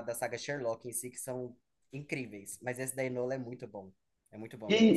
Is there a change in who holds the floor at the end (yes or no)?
yes